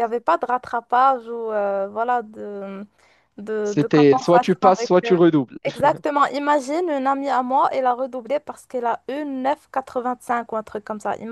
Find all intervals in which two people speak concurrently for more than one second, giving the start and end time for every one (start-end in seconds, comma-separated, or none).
3.6-5.1